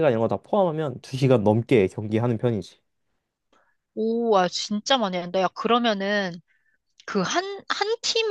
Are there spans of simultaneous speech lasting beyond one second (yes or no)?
no